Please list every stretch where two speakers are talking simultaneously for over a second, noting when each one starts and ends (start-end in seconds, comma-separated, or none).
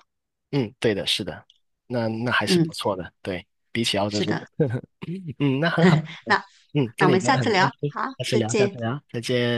7.0-8.8